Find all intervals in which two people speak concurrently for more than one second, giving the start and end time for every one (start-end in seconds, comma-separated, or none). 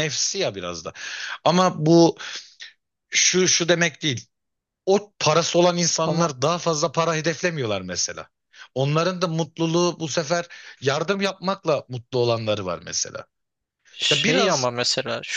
none